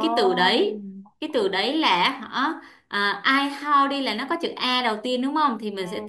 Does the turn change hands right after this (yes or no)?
no